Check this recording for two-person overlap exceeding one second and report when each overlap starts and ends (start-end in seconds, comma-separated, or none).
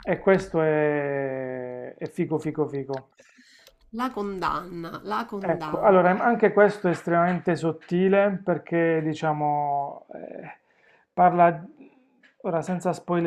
none